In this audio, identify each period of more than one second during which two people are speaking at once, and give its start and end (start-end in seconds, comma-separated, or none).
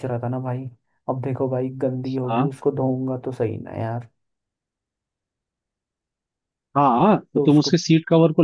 none